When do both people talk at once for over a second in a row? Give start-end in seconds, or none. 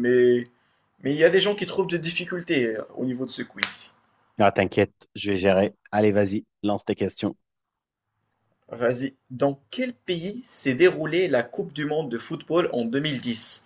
none